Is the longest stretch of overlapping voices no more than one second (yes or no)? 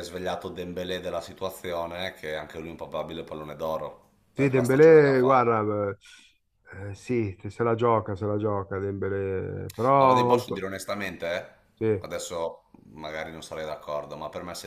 no